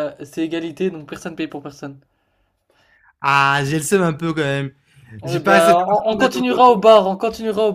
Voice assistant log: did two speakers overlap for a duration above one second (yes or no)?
yes